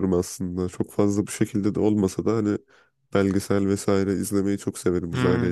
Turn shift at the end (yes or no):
yes